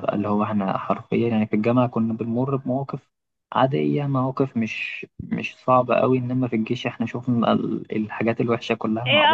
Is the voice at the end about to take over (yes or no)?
yes